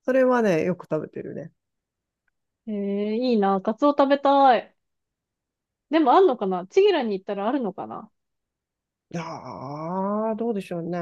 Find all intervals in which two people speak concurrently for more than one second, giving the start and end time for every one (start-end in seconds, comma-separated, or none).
none